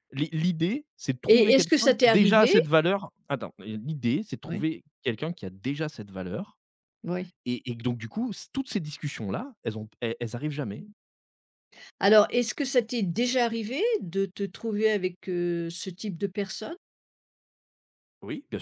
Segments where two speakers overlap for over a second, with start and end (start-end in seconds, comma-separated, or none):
1.3-2.5